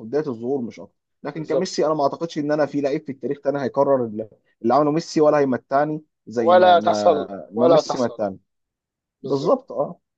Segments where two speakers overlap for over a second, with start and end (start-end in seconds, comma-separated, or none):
6.3-8.2